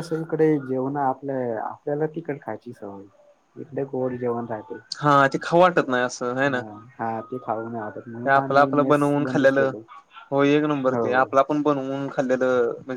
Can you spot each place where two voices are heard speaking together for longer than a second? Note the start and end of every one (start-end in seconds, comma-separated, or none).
8.1-9.7